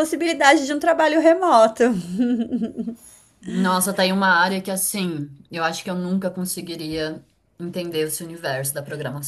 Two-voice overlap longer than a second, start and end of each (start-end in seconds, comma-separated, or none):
none